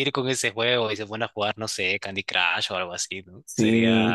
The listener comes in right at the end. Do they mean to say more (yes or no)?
yes